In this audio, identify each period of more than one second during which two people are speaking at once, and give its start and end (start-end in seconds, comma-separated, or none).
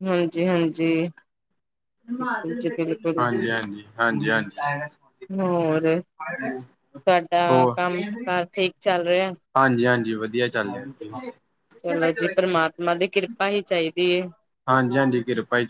none